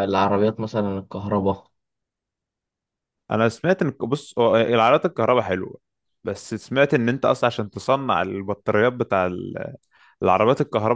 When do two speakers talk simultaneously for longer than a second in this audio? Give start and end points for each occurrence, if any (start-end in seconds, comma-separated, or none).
none